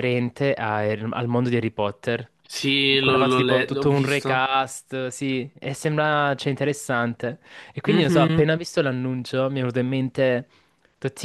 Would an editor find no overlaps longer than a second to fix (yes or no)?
no